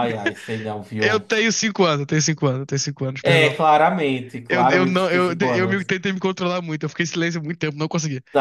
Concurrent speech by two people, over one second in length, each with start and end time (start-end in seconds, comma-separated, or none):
4.5-5.9